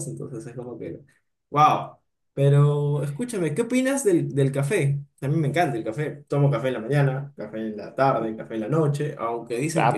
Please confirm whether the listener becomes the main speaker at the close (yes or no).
yes